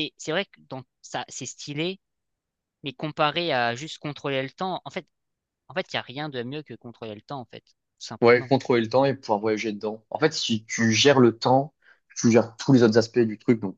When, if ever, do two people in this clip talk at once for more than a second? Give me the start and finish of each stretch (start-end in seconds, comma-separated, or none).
none